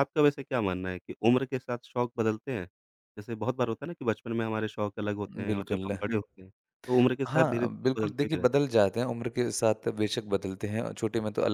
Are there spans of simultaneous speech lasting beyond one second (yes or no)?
yes